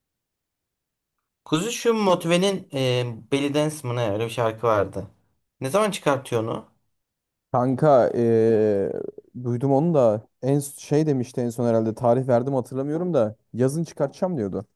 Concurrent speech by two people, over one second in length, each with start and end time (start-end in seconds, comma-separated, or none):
none